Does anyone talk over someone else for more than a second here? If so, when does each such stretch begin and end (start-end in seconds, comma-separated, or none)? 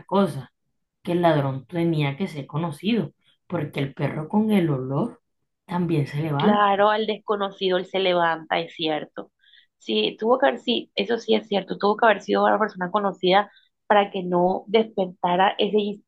none